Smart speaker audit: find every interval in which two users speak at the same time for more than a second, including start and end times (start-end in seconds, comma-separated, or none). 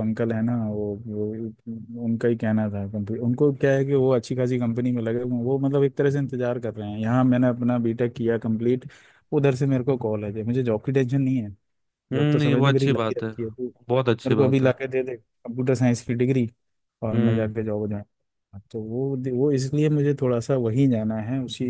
12.1-13.3